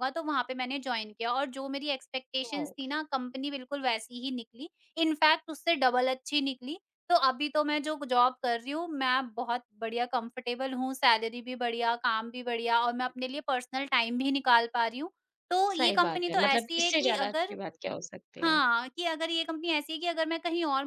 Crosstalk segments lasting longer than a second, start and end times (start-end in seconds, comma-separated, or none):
15.7-17.6